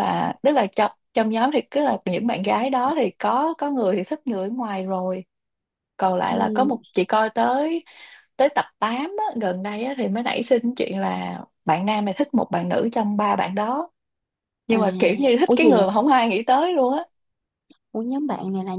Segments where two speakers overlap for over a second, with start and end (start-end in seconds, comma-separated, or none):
none